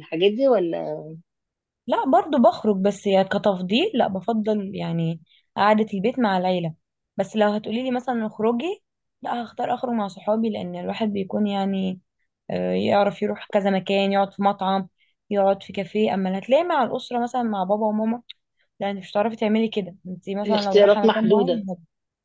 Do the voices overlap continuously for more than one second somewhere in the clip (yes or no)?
yes